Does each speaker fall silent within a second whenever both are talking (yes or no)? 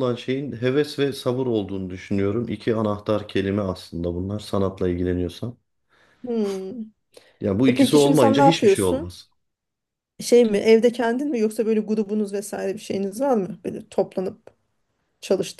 no